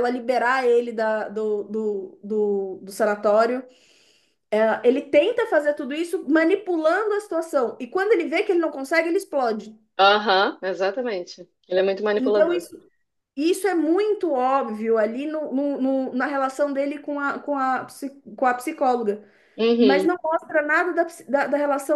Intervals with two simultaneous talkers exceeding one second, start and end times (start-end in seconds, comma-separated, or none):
none